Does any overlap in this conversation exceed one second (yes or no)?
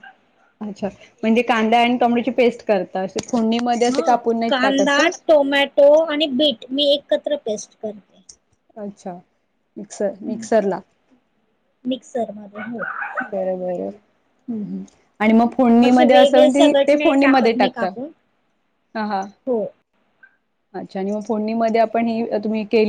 yes